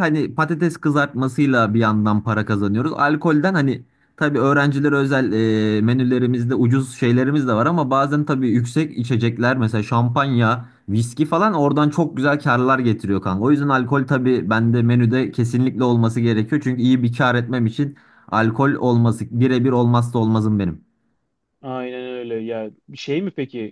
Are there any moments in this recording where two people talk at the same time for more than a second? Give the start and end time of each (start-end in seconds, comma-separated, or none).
none